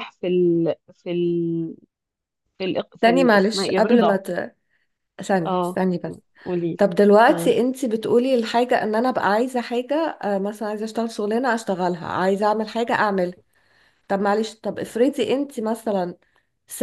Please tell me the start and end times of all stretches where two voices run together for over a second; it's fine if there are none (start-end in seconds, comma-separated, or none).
3.0-4.2